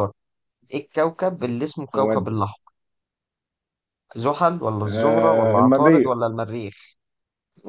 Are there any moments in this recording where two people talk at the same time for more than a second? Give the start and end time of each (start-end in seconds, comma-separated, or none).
4.8-6.1